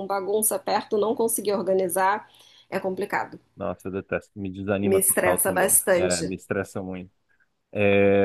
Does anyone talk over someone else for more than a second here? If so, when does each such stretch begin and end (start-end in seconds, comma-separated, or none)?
4.8-6.3